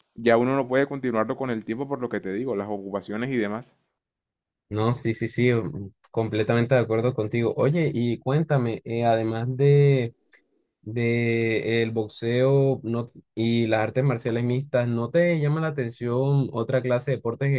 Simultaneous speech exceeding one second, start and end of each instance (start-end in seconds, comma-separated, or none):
none